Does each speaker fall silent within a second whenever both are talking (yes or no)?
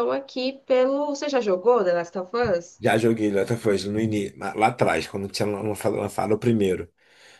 yes